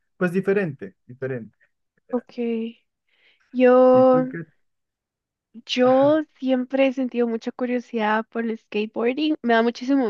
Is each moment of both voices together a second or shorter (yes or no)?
yes